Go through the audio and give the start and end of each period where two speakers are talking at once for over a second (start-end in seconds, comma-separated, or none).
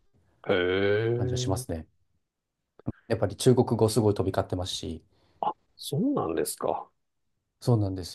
none